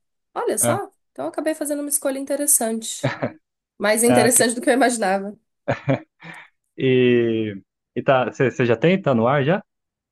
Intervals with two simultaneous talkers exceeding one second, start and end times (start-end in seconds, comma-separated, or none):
none